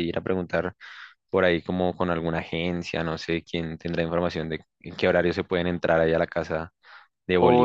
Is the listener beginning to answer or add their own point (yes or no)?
yes